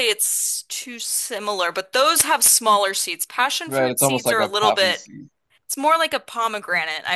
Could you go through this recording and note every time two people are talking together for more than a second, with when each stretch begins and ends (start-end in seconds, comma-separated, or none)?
3.7-5.1